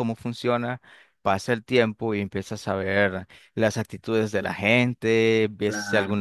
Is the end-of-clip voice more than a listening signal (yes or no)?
no